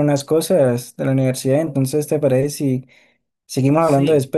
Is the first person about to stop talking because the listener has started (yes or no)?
yes